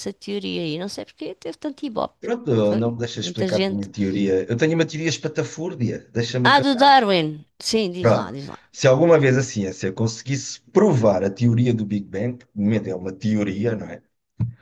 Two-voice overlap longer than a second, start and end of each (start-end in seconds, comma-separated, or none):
2.2-3.9